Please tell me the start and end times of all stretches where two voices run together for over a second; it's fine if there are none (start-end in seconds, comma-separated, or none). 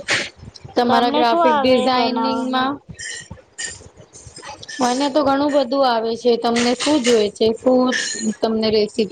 0.9-2.7